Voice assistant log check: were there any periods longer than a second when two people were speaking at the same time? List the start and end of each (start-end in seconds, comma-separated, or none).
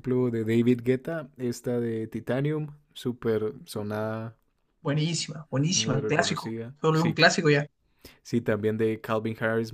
5.7-7.2